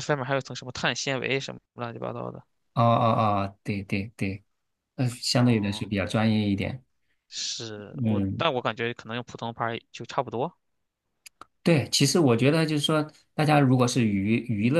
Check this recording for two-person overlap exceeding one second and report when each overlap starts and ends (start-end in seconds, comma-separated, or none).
none